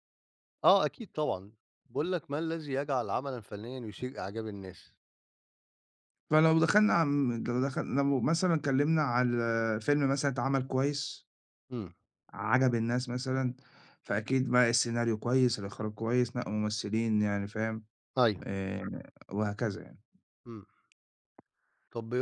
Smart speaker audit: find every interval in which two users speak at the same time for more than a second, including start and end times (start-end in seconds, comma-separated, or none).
none